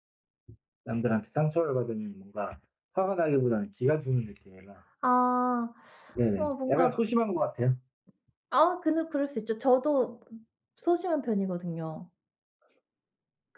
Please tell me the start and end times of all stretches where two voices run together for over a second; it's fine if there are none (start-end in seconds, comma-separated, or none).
none